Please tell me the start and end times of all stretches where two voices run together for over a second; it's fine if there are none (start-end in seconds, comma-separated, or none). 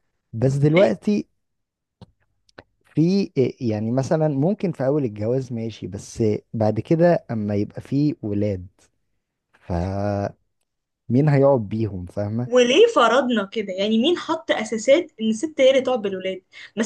none